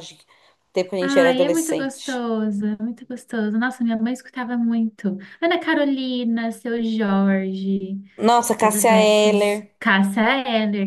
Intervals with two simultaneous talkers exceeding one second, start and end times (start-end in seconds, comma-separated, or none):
1.0-2.2, 8.6-9.8